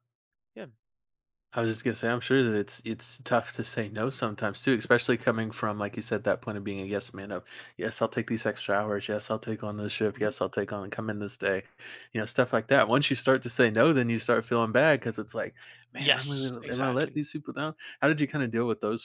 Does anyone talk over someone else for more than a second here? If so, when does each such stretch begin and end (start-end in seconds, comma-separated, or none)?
16.0-17.2